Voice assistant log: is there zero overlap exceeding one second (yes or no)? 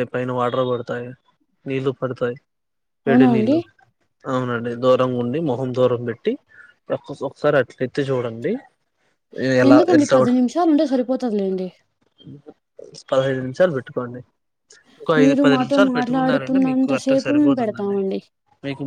no